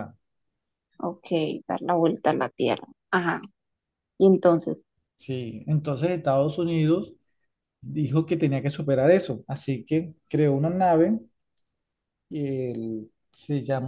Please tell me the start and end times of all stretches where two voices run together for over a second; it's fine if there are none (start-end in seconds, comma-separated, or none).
none